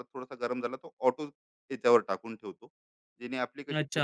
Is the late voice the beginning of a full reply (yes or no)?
yes